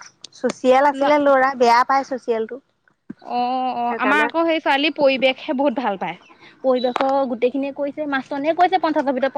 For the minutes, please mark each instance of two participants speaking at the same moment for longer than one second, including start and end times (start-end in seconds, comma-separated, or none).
none